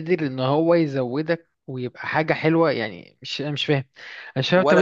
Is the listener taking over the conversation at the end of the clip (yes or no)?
yes